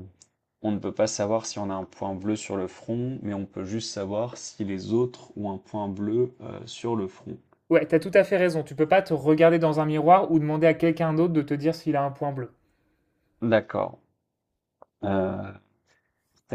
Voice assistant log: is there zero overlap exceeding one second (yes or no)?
yes